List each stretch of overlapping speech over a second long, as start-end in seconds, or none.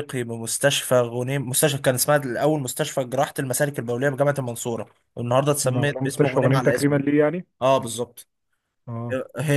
5.6-7.0